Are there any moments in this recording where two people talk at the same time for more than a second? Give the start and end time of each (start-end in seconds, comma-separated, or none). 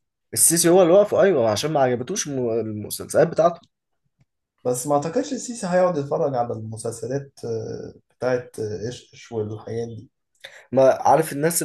none